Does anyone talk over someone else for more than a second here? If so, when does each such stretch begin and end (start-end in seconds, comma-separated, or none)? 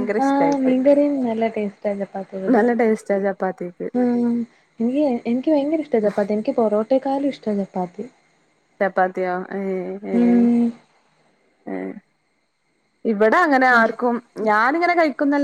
none